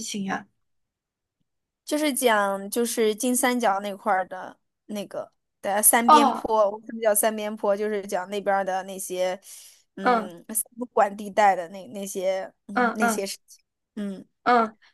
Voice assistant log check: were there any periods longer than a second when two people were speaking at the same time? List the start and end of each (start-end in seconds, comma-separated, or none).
none